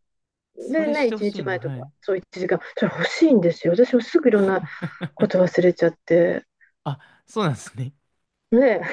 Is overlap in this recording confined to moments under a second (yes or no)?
no